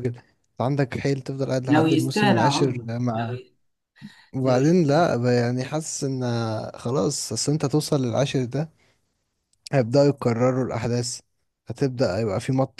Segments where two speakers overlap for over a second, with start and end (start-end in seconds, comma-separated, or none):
1.7-3.4